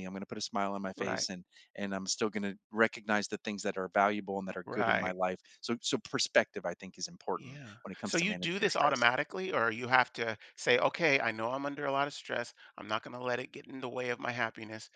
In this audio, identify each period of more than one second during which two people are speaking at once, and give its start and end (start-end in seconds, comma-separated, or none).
7.4-9.1